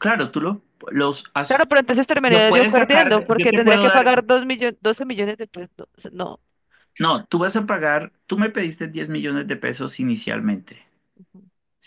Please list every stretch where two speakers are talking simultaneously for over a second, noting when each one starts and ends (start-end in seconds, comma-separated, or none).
2.3-4.1